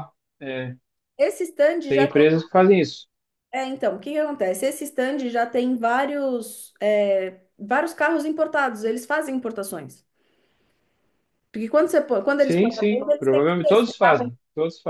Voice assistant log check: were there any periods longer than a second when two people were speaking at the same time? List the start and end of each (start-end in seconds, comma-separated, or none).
12.4-14.3